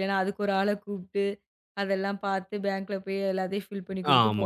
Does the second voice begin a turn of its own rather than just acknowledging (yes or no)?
yes